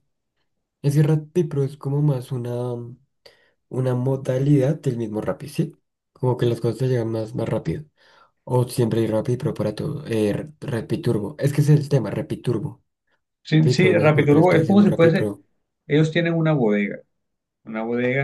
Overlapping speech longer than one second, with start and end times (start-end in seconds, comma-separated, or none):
13.6-15.3